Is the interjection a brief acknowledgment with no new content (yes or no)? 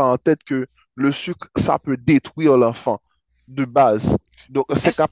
yes